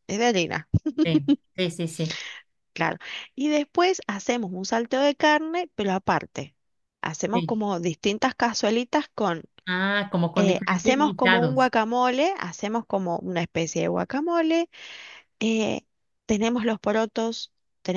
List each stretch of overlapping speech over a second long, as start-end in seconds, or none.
10.3-11.7